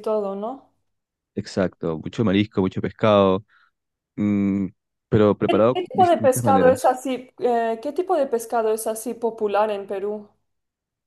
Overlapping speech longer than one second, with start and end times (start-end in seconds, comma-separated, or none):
5.5-6.9